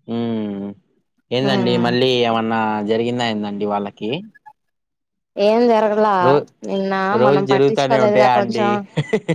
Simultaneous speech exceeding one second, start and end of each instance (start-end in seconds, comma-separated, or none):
7.2-8.6